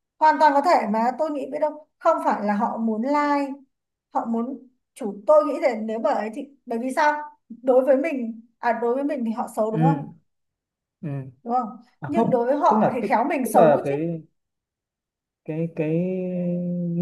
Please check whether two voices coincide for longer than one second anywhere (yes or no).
yes